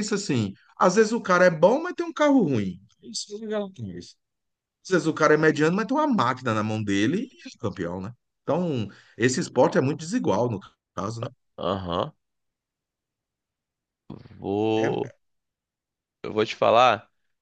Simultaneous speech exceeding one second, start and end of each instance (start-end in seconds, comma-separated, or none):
none